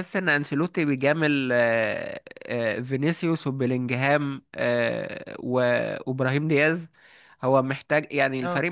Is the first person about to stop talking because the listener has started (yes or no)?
no